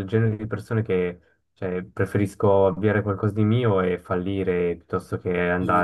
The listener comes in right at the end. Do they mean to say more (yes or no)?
no